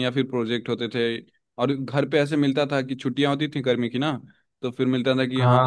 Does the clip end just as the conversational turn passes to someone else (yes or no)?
no